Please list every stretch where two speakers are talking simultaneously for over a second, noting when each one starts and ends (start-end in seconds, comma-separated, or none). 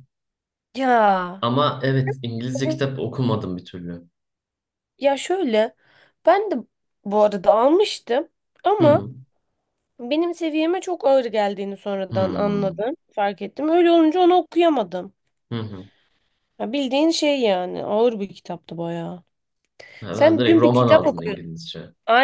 20.1-21.4